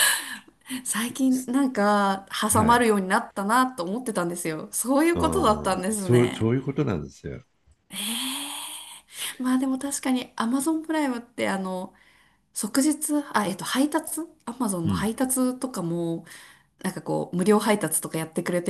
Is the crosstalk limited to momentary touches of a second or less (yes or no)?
no